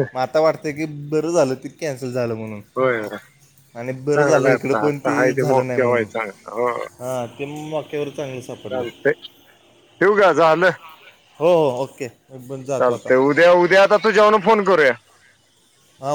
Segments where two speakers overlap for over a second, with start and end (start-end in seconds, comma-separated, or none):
4.1-6.1